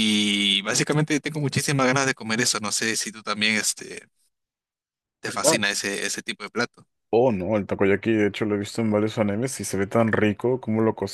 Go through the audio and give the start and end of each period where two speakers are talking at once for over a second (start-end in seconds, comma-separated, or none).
none